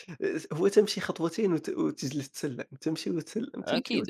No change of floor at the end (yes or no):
no